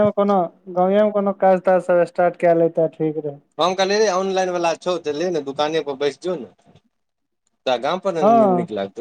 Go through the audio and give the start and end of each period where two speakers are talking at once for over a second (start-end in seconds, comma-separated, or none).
none